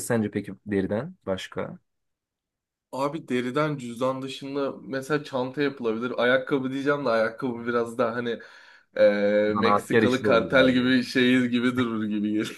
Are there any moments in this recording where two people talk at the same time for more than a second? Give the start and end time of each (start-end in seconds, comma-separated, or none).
9.5-10.9